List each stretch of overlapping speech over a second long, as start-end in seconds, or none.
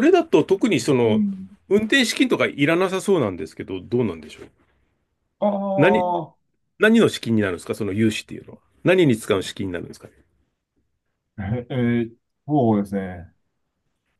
none